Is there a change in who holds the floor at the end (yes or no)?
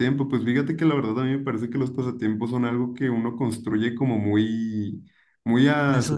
no